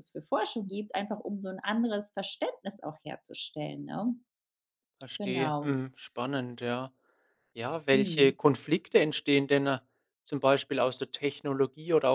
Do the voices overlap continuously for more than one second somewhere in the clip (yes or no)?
no